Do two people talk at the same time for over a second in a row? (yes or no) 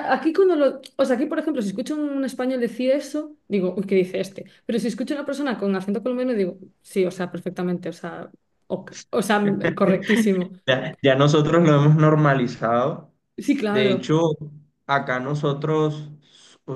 no